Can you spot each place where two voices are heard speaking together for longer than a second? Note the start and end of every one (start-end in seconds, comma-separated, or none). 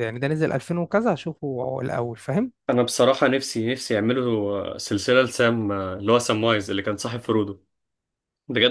none